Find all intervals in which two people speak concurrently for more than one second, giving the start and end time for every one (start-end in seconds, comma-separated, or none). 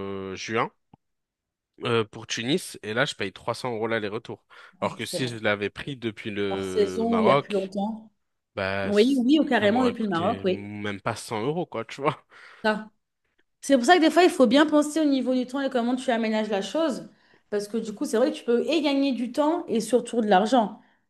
6.5-7.7, 8.8-10.7